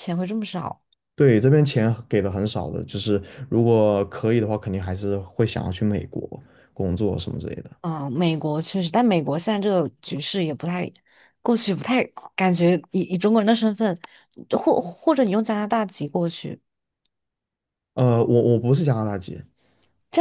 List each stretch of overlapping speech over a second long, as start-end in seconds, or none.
none